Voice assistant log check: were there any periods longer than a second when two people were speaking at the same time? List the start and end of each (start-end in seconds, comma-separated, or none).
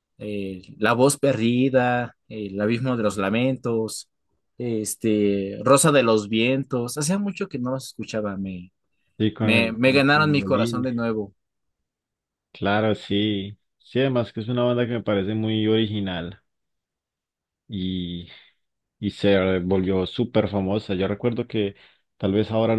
9.4-10.9